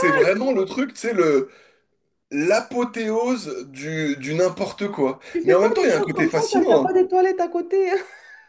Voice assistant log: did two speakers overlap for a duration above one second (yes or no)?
yes